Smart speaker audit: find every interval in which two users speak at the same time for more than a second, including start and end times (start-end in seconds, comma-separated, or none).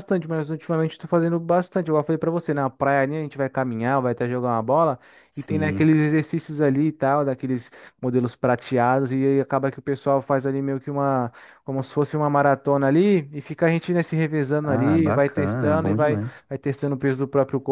14.6-16.4